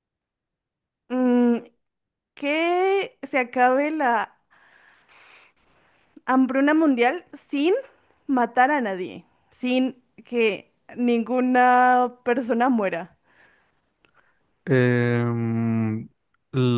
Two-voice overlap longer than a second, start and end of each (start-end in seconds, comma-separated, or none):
none